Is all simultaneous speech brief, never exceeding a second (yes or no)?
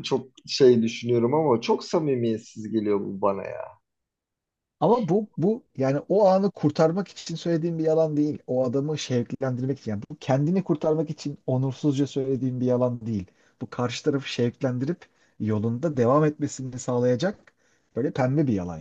yes